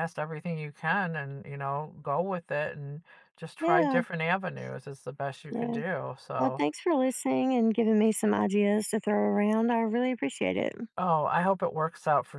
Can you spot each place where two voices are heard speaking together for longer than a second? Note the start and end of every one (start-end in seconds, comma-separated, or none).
none